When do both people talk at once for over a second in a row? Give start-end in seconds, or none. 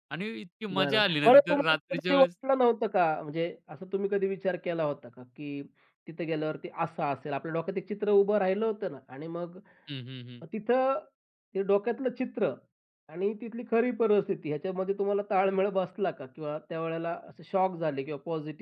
0.7-2.4